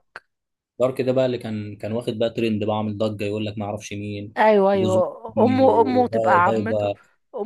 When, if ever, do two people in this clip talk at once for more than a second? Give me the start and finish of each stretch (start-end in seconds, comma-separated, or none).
4.7-6.9